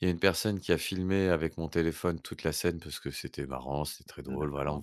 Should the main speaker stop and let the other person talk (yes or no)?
no